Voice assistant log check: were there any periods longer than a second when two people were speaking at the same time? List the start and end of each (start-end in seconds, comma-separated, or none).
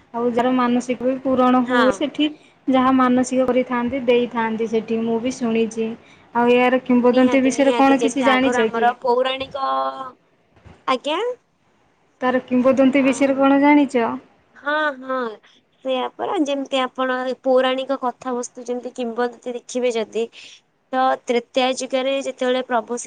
7.1-8.8